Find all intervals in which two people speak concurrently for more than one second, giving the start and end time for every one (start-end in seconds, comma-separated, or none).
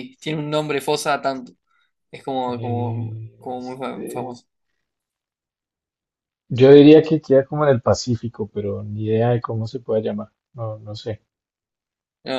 2.5-4.4